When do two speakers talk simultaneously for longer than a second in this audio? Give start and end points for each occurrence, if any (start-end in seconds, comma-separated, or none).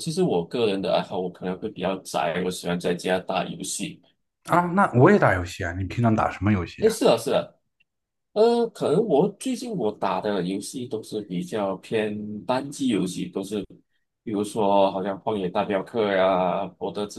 none